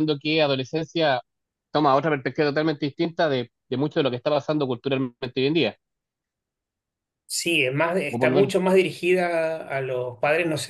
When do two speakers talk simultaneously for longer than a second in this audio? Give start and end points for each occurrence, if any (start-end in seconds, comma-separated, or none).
none